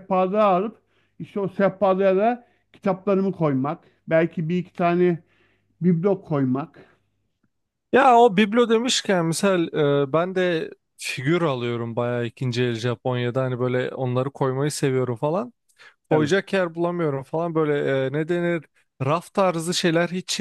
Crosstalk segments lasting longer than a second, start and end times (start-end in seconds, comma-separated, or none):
none